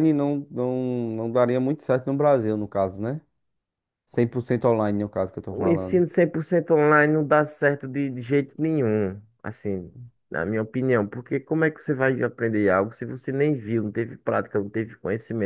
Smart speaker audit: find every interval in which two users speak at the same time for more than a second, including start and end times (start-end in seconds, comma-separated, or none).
none